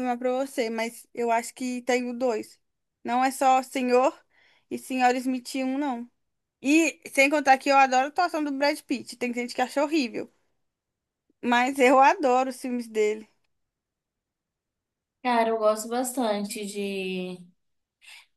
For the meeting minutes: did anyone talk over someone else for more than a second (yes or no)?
no